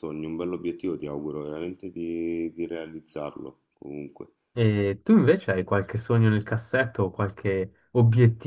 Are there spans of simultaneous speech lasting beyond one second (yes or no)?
no